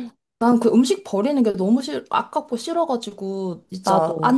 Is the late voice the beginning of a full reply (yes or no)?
no